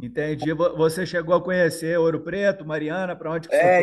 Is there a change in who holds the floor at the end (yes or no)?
yes